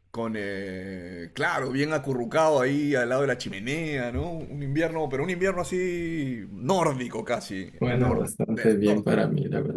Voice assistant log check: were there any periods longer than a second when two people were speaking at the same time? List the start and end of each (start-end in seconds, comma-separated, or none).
7.8-9.3